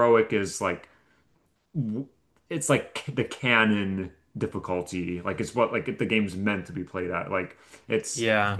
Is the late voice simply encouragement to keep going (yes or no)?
yes